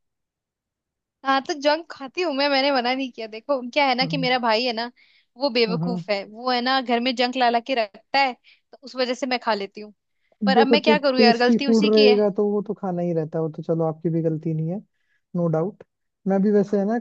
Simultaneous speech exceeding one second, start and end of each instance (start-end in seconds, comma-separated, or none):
10.4-12.2